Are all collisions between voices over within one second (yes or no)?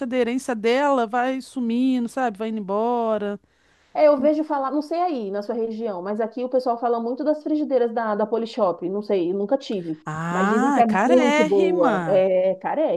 no